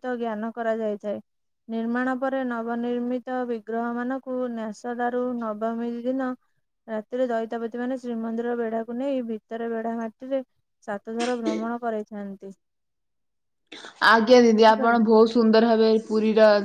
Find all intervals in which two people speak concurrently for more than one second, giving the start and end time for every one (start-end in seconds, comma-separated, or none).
none